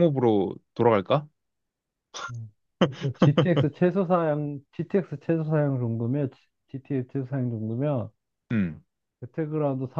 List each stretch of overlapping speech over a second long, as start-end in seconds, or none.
none